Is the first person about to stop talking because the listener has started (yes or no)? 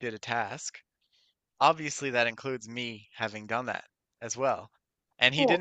no